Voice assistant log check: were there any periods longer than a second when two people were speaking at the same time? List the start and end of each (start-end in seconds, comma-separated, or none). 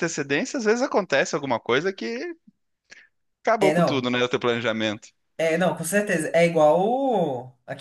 none